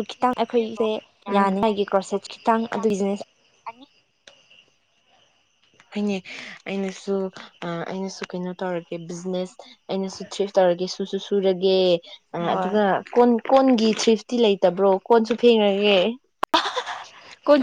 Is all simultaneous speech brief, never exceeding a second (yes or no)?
yes